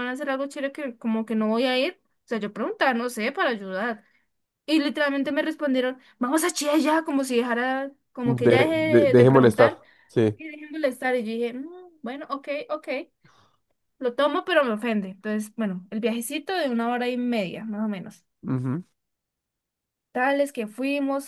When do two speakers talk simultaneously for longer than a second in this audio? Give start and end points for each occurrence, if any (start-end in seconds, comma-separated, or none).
8.2-9.8